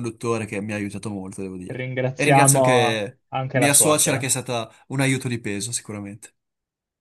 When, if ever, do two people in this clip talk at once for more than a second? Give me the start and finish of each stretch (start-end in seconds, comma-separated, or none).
1.7-4.3